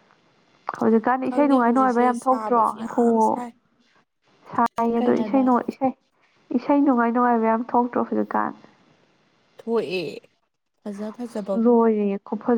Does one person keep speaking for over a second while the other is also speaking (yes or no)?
yes